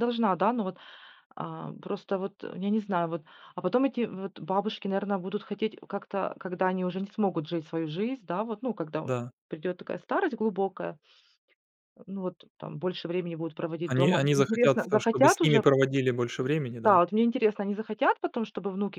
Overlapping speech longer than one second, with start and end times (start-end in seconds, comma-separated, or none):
13.9-15.6